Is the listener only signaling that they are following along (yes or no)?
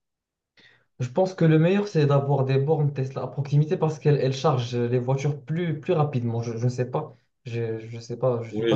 no